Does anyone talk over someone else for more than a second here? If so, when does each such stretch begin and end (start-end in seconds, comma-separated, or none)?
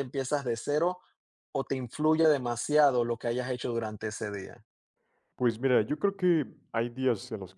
none